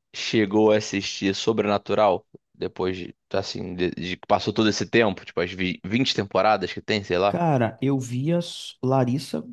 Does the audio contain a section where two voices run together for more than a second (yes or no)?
no